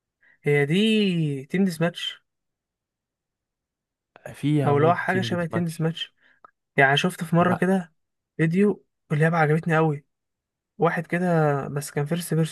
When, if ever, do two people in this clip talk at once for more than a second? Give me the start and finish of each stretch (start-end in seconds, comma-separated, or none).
4.7-5.9